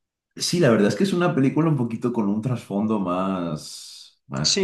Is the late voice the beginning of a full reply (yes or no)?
yes